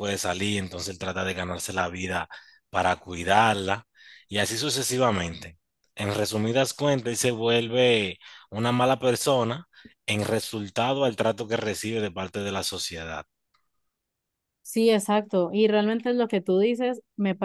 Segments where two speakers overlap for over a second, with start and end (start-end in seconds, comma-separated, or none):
none